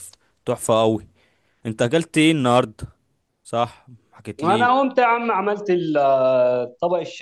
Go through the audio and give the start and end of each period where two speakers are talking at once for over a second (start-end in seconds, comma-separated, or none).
none